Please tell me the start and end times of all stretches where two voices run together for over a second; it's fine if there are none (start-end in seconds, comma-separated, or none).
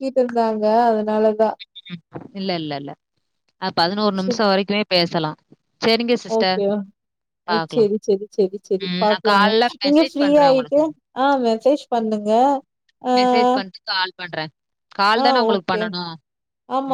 8.9-10.8